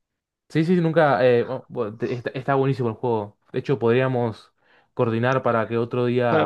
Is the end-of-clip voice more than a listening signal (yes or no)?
yes